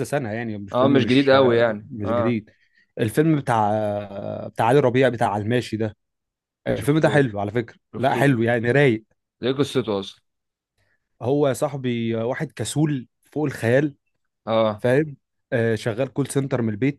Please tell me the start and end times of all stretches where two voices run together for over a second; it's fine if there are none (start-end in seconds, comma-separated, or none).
0.7-2.4